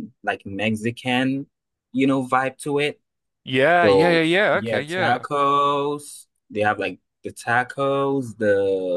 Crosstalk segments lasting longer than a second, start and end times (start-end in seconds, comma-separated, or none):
3.8-5.2